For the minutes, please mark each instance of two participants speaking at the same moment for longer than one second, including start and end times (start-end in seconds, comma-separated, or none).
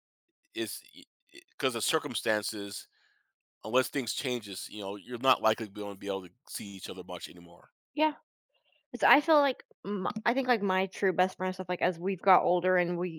none